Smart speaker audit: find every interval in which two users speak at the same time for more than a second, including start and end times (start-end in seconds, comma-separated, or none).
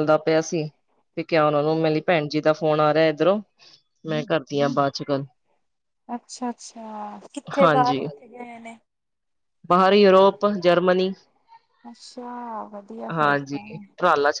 none